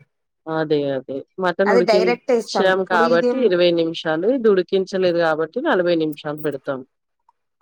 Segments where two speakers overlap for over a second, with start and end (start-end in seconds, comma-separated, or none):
1.7-3.4